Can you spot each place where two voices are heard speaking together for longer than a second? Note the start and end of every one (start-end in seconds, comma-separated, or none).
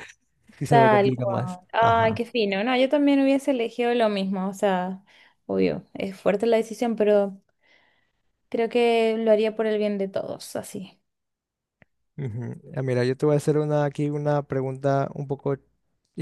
0.7-2.2